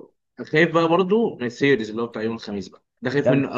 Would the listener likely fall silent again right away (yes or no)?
no